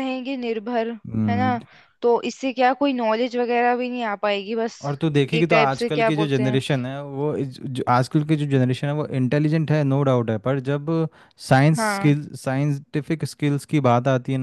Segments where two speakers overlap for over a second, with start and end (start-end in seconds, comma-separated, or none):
5.3-6.6